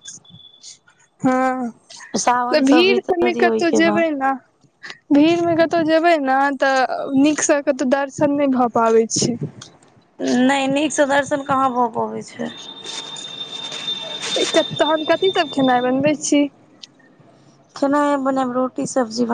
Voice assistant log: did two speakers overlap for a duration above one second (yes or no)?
yes